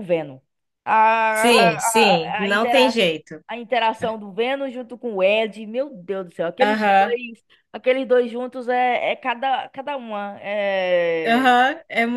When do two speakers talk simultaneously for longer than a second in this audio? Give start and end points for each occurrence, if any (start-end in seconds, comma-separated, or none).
1.3-3.0